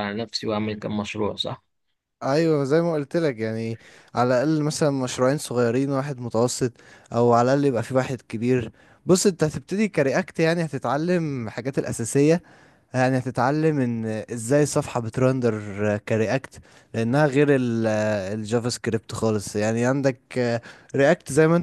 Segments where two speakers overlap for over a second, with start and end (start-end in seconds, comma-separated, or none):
none